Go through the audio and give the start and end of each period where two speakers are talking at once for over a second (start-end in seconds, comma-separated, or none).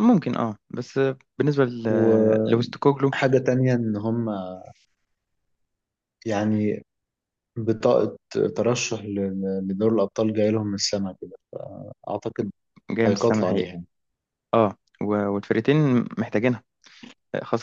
1.9-3.1